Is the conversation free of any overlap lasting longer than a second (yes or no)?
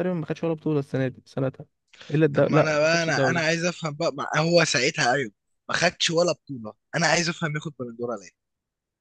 no